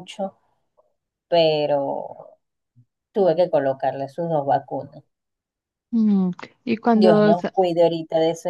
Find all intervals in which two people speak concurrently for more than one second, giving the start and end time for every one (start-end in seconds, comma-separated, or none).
none